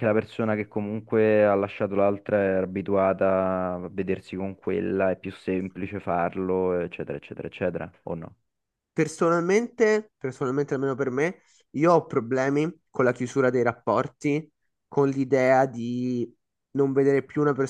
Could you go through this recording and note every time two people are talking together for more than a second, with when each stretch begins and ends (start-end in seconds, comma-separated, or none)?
none